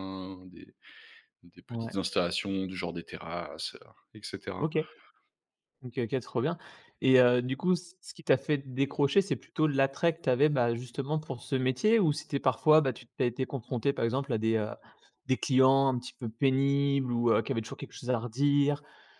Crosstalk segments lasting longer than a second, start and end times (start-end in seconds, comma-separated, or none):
none